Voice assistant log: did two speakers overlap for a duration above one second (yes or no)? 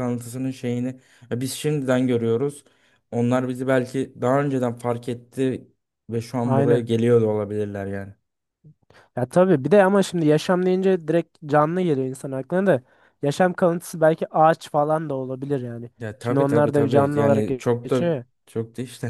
yes